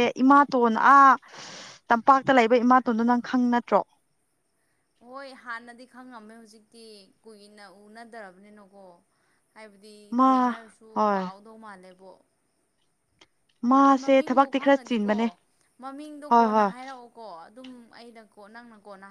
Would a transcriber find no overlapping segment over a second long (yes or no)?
no